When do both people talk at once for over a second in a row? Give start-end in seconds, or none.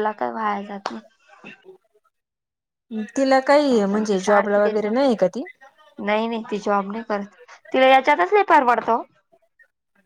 3.6-4.9